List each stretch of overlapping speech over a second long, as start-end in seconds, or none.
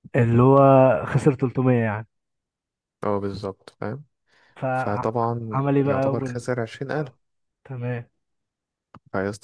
4.7-6.0